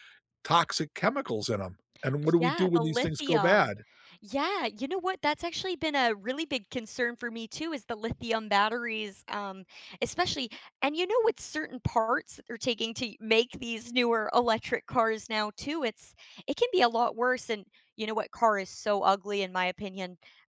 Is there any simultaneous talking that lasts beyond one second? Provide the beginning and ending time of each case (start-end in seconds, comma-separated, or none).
2.4-3.7